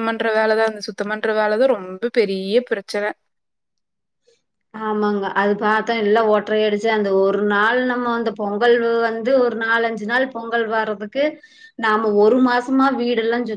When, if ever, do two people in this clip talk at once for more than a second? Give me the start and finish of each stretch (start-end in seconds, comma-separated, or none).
none